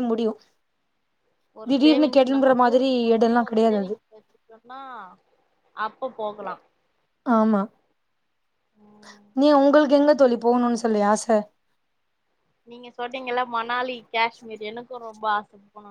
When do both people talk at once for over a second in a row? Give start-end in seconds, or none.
1.7-3.9